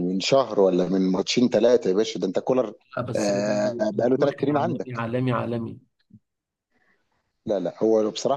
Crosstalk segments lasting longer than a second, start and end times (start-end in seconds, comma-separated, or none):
3.2-5.0